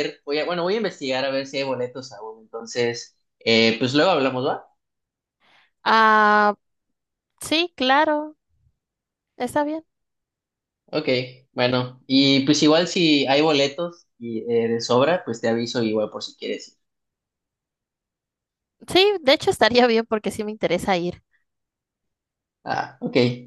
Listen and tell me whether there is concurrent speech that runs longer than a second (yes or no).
no